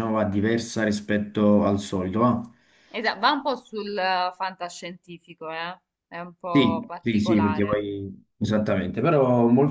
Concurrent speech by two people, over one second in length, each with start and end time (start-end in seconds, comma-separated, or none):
6.5-7.8